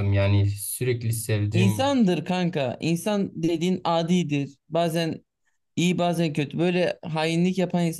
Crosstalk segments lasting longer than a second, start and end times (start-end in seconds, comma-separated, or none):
none